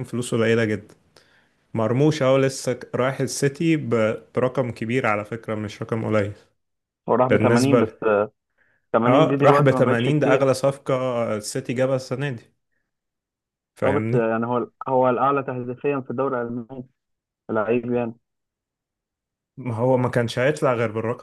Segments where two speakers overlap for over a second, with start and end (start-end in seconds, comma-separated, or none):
9.1-10.5